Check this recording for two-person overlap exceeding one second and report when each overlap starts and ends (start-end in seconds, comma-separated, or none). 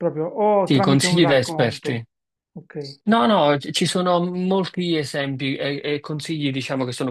0.6-2.0